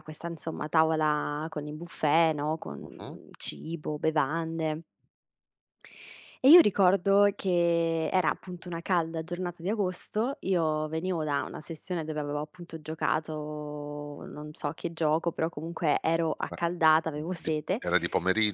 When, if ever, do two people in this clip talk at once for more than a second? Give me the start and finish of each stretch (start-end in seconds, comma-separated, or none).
none